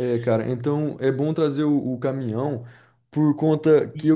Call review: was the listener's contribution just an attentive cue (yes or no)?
yes